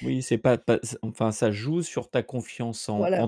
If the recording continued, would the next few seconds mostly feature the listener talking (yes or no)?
no